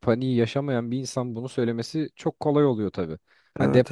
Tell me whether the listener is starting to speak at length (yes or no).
no